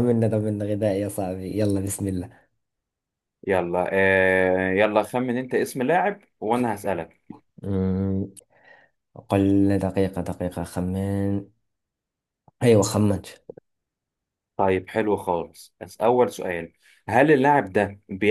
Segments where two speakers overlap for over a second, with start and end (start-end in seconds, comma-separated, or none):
none